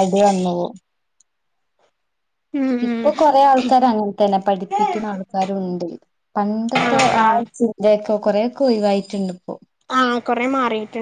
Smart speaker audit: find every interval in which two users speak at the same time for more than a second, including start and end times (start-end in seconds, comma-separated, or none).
none